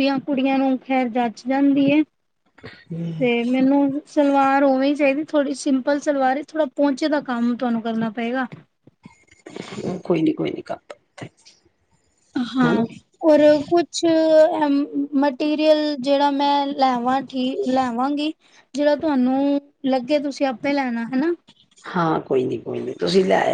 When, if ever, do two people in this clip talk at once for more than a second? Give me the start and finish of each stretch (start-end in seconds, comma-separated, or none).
none